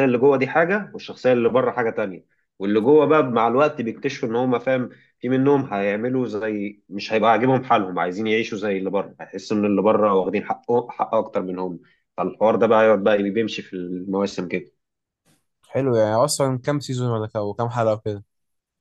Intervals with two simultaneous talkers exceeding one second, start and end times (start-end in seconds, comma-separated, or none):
none